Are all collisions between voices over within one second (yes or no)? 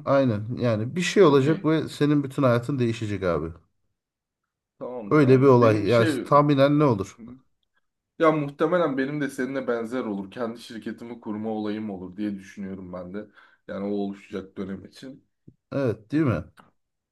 no